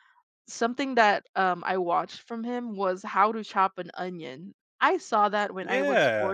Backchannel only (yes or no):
no